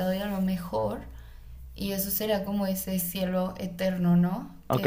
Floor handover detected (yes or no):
yes